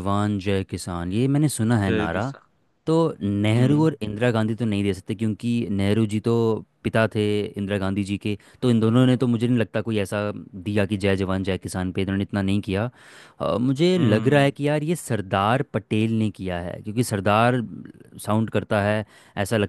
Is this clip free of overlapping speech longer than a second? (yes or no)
yes